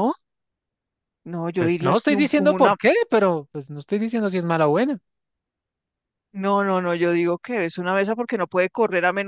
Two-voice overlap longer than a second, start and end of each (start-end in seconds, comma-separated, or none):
1.6-2.8